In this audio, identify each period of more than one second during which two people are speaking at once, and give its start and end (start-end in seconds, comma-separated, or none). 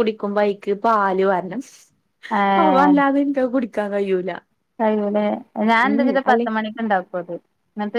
none